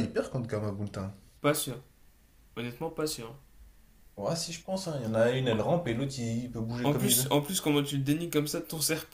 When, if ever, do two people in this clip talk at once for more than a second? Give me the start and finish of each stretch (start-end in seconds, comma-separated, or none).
none